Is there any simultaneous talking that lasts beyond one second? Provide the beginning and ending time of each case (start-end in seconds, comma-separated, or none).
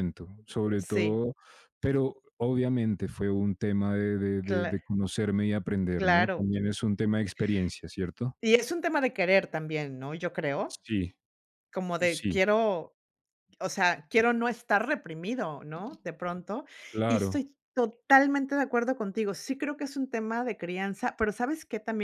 none